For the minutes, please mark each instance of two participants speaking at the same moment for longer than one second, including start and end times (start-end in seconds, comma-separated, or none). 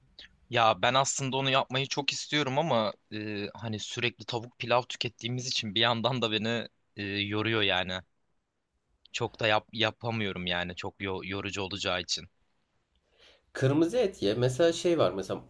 none